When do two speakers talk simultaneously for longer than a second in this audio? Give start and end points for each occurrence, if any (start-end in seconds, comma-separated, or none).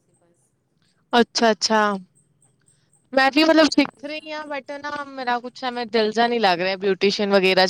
3.3-4.9